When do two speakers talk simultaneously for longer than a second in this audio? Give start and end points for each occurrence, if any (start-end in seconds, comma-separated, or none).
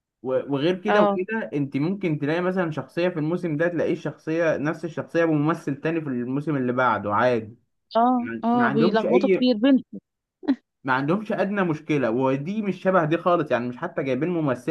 8.2-9.5